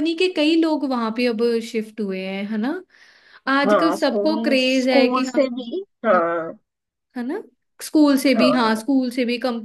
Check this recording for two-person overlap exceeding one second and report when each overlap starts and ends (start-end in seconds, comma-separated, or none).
3.6-5.5